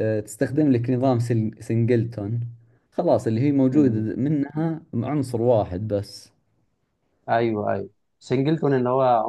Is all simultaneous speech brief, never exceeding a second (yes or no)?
yes